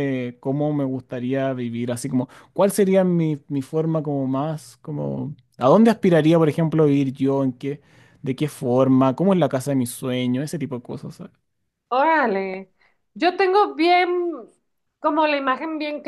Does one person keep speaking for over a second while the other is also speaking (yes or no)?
no